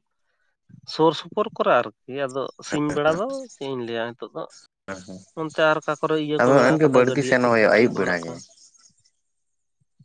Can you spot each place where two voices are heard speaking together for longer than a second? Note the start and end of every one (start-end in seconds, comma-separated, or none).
6.4-8.3